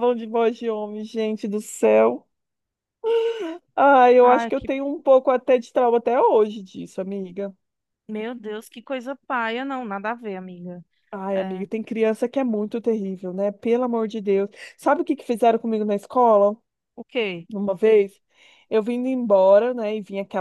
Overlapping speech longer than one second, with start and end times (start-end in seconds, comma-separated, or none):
none